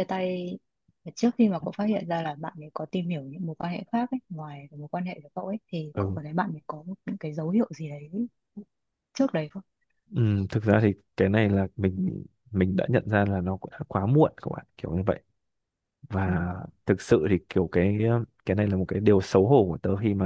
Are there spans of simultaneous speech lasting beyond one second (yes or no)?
no